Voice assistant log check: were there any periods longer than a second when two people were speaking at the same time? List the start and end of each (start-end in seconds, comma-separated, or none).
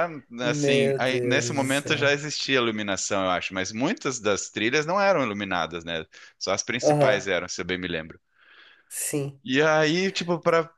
0.5-2.1